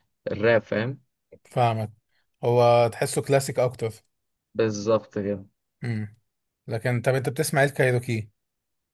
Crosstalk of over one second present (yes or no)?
no